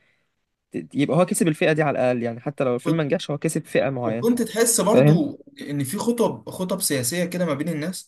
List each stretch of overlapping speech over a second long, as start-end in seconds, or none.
none